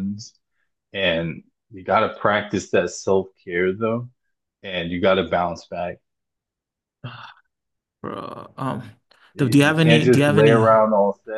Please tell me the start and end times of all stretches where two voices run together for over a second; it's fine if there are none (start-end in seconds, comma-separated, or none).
9.4-10.7